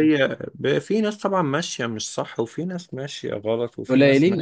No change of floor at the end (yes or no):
no